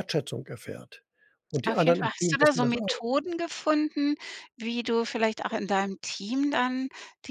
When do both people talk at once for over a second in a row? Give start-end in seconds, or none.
1.6-3.0